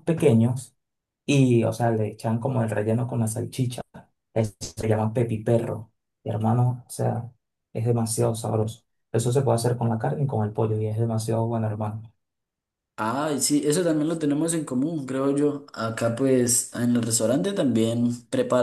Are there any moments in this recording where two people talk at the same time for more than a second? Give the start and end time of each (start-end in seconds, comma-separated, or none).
none